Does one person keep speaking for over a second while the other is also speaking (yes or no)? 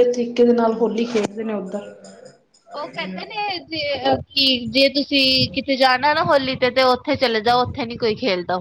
no